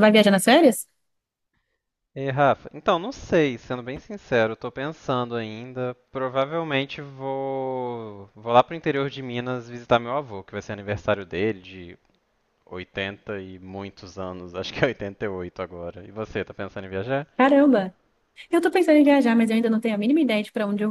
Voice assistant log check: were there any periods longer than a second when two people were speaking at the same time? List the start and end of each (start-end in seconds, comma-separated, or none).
none